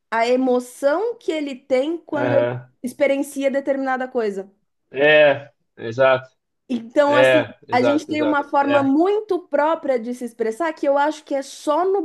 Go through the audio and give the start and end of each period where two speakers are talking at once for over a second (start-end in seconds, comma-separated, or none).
7.1-8.9